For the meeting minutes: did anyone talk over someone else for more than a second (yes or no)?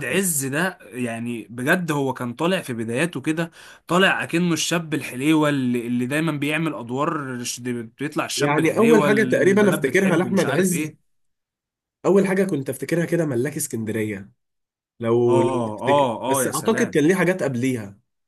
yes